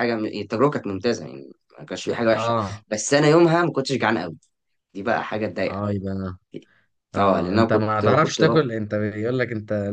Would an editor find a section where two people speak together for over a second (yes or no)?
yes